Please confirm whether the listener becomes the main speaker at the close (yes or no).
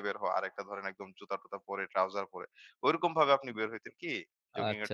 yes